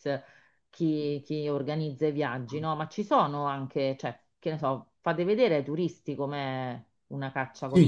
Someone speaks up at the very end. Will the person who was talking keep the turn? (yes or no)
no